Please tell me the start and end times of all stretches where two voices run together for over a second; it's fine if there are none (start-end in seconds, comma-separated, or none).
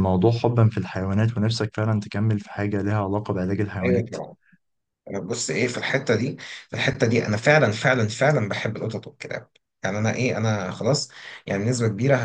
none